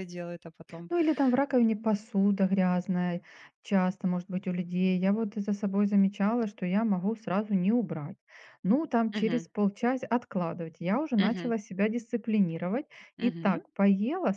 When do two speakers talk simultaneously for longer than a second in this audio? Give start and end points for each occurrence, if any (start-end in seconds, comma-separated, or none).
none